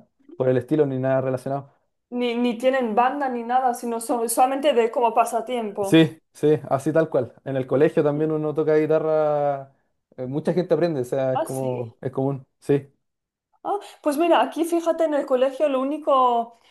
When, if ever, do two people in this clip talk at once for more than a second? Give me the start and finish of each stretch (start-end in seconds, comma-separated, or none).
none